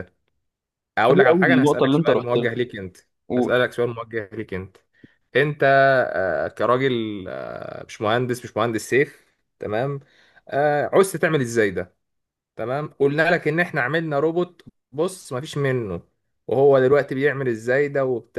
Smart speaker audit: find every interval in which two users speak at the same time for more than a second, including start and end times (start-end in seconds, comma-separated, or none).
1.1-2.5